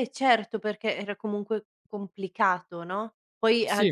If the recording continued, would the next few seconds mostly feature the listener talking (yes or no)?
no